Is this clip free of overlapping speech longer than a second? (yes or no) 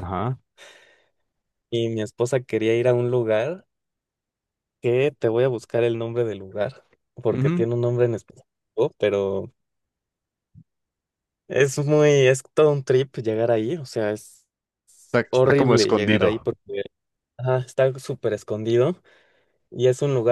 no